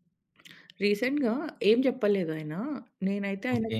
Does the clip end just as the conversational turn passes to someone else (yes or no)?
no